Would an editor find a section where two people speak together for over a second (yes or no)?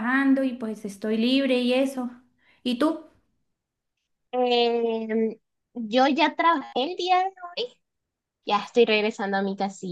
no